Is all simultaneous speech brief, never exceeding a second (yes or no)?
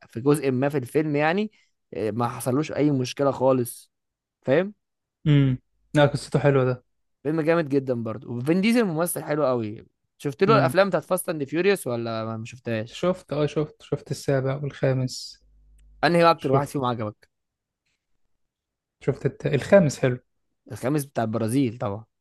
yes